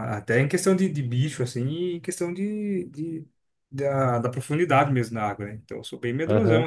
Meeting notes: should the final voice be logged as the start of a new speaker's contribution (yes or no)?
yes